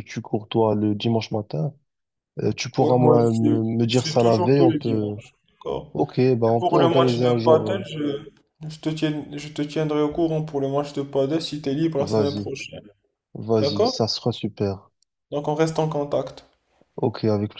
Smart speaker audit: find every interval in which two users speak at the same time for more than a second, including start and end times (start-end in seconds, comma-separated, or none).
2.8-5.2, 6.6-7.8